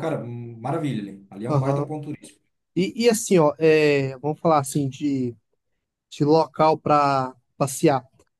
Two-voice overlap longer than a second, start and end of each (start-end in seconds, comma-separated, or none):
none